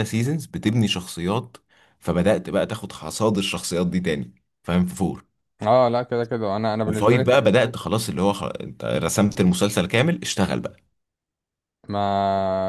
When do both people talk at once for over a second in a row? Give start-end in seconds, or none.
none